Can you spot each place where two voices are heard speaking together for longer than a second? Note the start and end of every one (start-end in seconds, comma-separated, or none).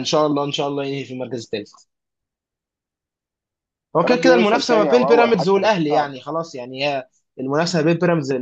4.0-6.1